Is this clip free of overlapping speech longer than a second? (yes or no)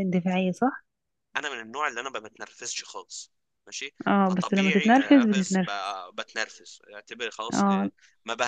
no